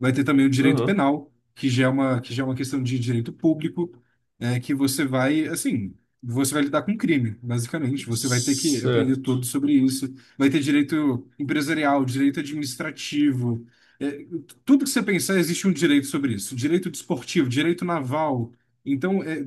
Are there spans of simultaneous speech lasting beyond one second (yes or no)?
yes